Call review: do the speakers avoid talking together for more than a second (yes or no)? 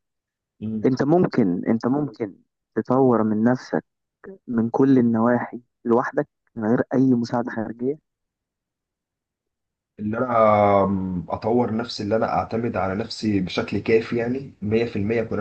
yes